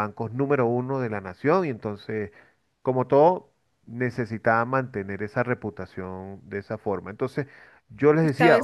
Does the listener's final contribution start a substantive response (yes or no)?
yes